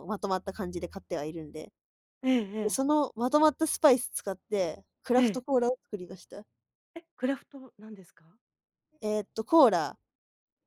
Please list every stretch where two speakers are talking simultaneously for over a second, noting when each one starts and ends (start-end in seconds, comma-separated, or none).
none